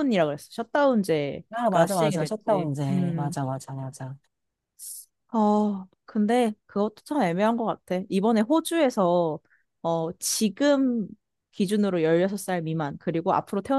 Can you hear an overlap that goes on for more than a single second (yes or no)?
yes